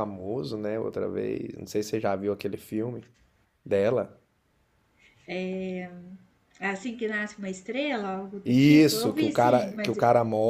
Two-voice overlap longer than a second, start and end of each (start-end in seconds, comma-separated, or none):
8.4-10.0